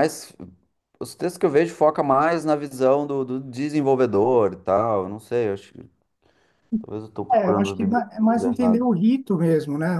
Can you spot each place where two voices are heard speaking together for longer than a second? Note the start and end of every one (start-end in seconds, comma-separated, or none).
7.3-8.9